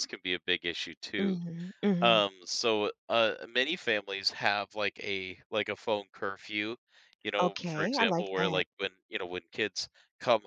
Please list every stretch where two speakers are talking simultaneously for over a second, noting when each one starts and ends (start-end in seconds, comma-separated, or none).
7.4-8.6